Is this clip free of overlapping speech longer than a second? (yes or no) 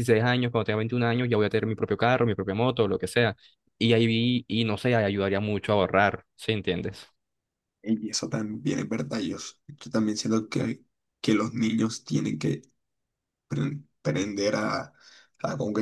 yes